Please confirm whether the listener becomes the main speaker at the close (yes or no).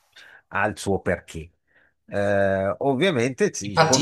yes